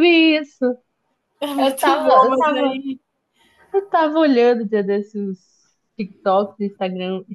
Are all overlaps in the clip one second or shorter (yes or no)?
no